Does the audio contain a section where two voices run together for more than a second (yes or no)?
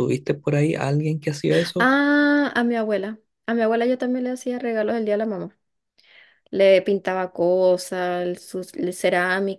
no